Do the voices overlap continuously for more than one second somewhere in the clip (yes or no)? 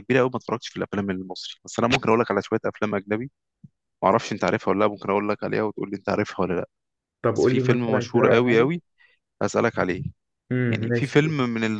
yes